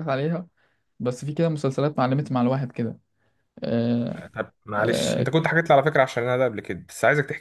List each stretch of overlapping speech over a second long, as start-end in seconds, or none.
none